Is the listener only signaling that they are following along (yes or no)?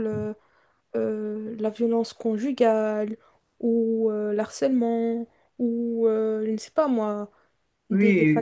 no